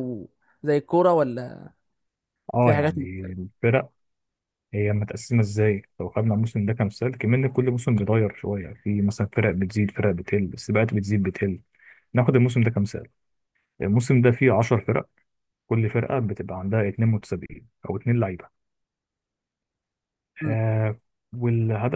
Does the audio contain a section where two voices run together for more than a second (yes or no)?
no